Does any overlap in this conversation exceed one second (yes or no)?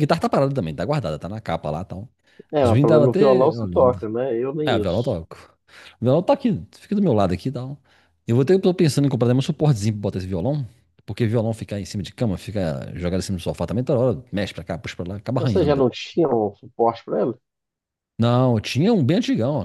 yes